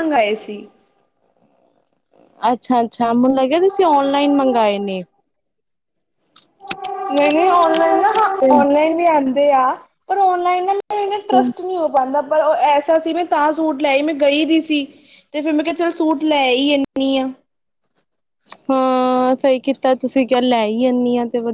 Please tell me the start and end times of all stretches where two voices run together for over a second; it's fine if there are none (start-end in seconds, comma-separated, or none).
none